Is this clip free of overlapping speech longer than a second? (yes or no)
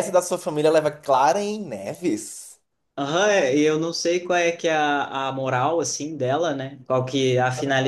yes